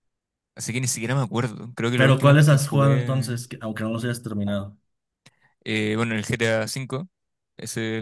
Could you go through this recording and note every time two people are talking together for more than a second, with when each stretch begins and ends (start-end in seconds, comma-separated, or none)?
1.9-3.4